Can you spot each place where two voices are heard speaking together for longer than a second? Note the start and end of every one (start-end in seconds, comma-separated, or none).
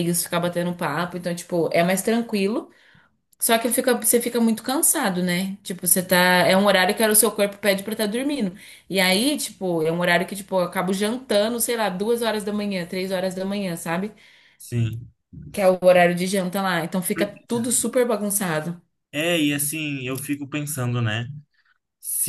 none